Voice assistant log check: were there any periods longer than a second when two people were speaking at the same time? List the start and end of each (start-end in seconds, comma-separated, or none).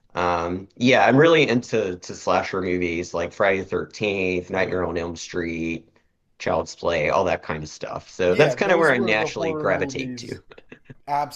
8.2-10.4